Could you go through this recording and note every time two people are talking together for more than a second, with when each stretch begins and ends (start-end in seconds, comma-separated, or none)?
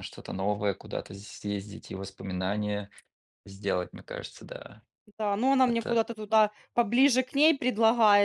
none